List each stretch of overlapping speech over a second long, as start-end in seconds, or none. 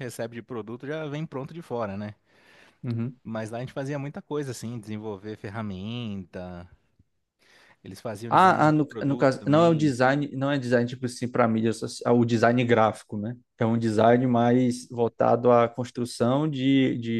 8.3-9.9